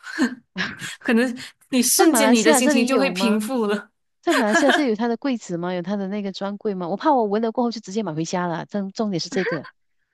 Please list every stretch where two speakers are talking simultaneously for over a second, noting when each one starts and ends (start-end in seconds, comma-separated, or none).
1.9-3.4